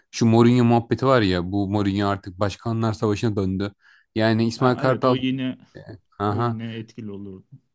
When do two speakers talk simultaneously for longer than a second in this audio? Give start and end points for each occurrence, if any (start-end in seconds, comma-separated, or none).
none